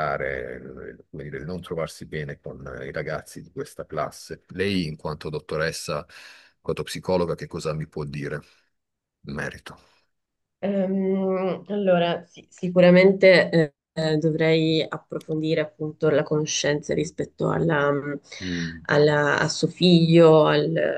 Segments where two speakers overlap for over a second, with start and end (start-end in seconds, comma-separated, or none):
none